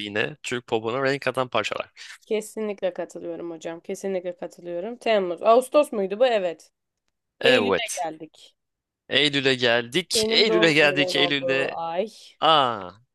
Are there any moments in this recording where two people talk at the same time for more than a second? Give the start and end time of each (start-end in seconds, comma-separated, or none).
10.1-11.8